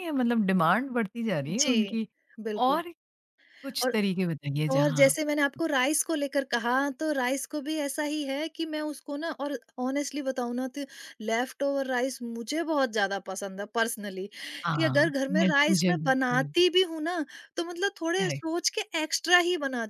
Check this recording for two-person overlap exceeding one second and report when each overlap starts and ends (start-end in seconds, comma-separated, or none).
14.8-16.5